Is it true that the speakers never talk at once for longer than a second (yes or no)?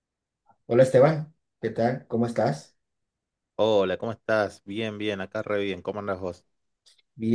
yes